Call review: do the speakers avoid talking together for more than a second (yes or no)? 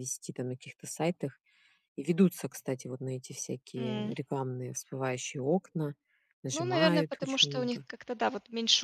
no